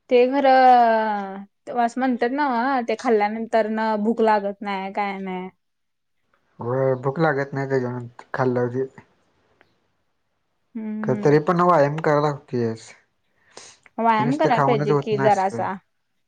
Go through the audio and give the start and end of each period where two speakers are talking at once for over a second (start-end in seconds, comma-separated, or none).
14.2-15.7